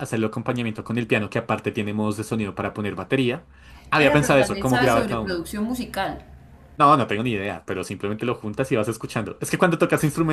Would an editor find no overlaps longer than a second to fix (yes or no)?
no